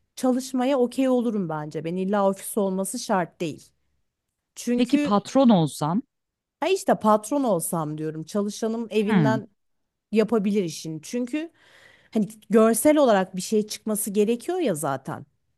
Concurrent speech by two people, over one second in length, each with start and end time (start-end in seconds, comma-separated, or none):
none